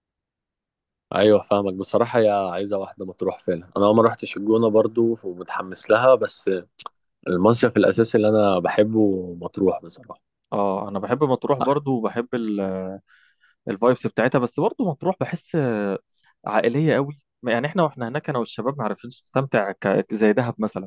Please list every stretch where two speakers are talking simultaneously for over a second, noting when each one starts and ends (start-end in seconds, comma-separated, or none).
none